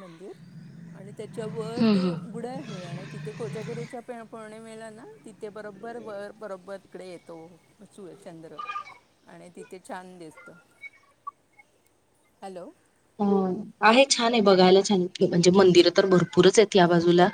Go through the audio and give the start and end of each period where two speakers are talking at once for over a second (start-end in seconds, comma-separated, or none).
none